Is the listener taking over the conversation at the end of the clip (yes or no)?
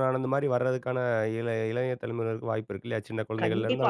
yes